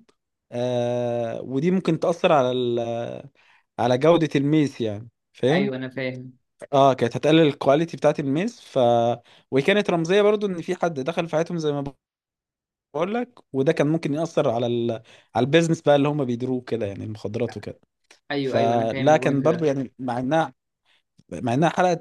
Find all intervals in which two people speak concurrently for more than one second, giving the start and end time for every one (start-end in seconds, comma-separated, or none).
18.4-19.7